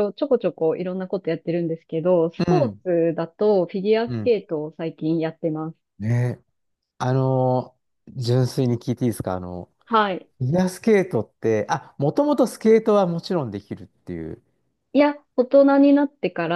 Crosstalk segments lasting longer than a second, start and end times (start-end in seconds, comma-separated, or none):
none